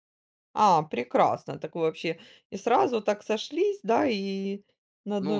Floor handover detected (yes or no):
yes